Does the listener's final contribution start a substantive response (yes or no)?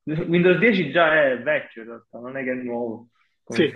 yes